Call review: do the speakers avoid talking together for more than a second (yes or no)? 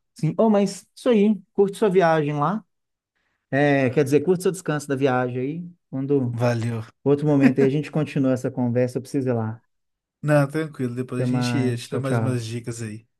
no